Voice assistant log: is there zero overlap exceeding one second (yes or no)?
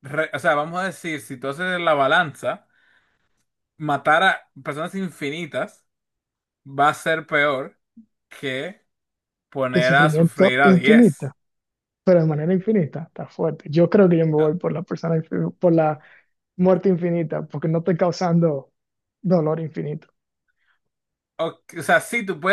no